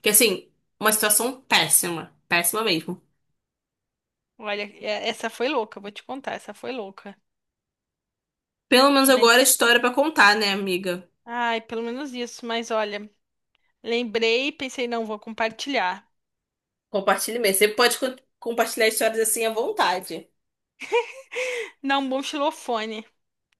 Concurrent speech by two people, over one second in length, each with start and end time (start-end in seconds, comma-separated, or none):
none